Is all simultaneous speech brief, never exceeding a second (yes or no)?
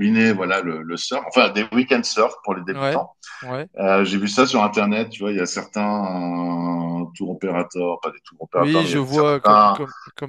no